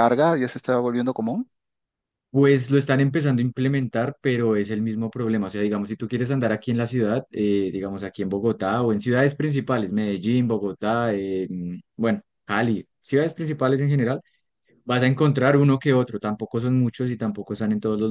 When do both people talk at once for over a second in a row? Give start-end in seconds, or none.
none